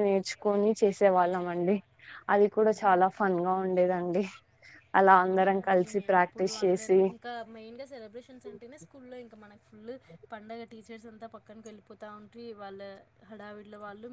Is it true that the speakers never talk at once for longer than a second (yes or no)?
no